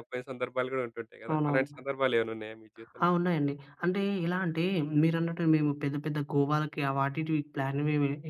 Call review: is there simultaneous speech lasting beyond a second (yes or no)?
no